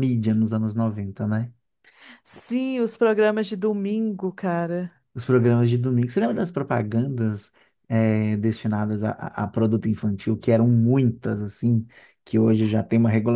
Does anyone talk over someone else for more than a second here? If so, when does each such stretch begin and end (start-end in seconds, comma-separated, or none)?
none